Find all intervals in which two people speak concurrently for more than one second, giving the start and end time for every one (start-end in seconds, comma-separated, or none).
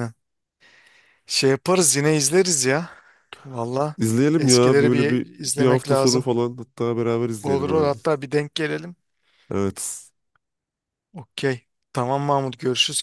4.4-6.3